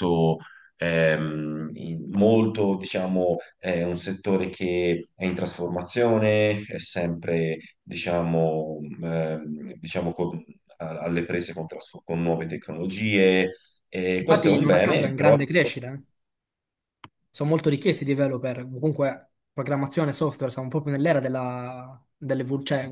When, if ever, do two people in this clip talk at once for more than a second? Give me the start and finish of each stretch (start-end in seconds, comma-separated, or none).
14.2-15.7